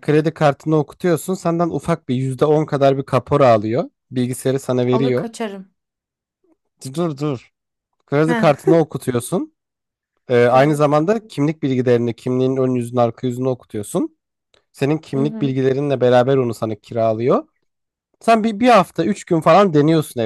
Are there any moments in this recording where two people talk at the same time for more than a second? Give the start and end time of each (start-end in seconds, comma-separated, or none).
none